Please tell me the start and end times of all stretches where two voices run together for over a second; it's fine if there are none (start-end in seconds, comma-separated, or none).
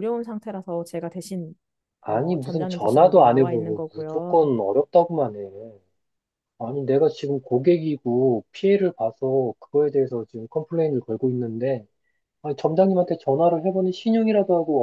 2.1-4.5